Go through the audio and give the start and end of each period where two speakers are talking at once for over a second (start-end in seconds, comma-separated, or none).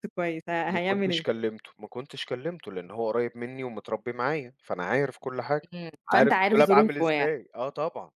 6.1-7.3